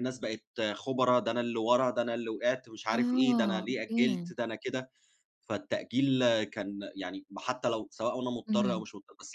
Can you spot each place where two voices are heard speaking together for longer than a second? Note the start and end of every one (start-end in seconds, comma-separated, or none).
2.9-4.3